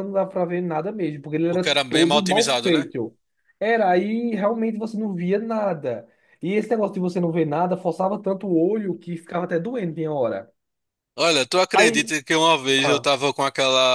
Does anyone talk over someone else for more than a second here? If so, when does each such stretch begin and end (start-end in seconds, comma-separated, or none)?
1.5-2.9